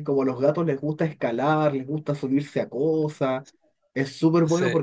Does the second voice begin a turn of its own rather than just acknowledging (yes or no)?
no